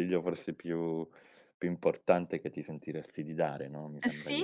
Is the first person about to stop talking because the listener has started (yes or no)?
yes